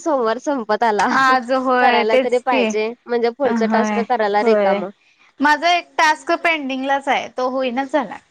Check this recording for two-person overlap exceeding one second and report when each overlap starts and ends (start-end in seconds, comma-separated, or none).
1.2-2.7